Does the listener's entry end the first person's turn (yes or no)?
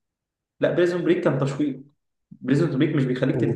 no